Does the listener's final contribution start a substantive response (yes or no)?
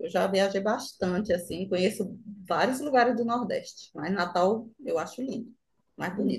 yes